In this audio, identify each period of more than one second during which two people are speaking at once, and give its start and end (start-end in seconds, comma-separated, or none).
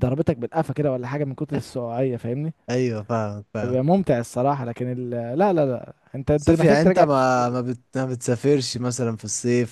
6.3-7.7